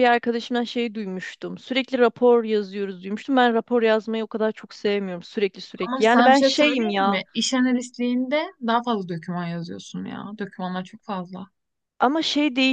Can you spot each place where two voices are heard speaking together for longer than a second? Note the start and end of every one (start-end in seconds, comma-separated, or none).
5.9-7.2